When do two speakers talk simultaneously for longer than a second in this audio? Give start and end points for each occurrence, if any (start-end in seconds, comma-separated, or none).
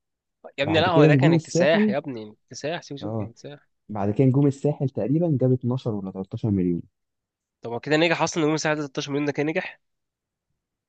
0.6-1.9